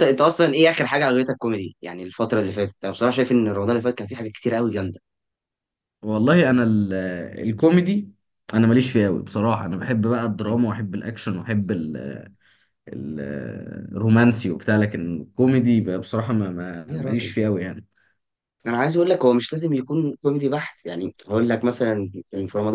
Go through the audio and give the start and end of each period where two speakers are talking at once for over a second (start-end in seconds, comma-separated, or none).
none